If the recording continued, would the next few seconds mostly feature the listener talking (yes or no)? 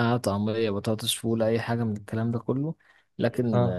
no